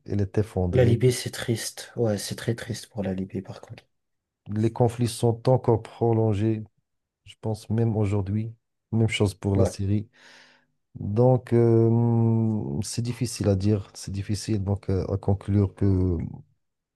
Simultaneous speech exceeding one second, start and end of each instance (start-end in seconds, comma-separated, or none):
none